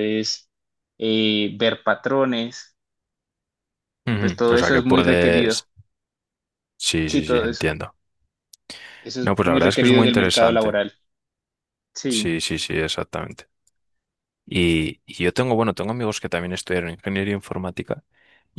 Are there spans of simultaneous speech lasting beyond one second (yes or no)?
yes